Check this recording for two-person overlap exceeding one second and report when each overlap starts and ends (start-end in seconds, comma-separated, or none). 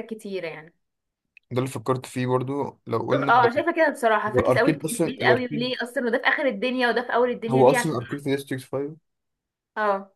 4.3-5.8